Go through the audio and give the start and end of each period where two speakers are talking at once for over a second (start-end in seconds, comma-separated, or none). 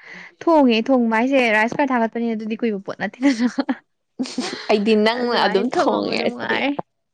5.1-6.6